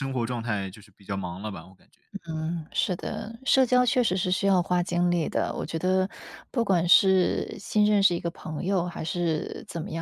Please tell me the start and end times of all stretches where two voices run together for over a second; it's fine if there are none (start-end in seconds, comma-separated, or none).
none